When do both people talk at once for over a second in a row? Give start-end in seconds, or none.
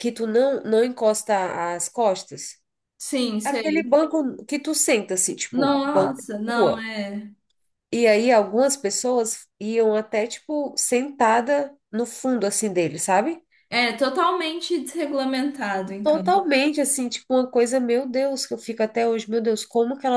5.5-6.9